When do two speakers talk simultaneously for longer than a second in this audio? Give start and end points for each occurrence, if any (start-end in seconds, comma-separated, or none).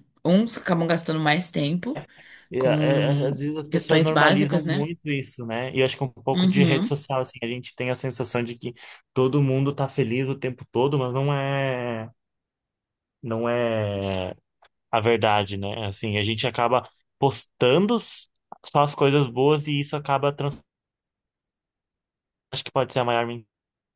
2.6-4.8